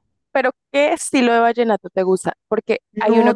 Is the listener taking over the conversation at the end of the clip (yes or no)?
no